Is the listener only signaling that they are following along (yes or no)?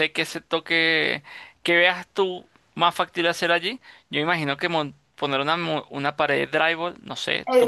no